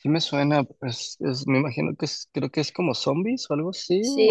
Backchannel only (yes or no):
no